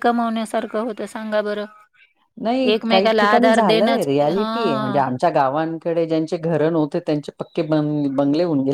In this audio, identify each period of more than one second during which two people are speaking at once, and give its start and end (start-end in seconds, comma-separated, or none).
2.7-5.0